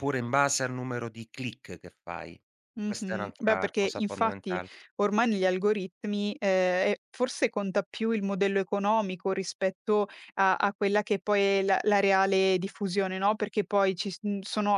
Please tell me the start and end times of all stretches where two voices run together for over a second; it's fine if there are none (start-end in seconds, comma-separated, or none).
2.8-4.6